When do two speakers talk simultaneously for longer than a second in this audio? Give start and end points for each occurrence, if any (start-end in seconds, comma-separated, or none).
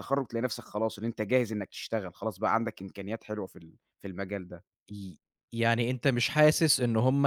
none